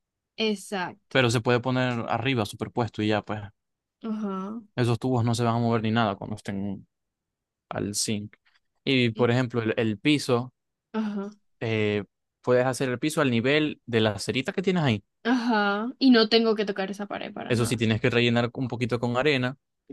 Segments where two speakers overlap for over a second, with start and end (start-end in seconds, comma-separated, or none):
none